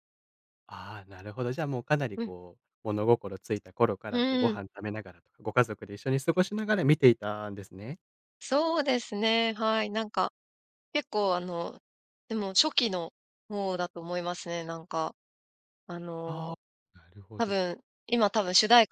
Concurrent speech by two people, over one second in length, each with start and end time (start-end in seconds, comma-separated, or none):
none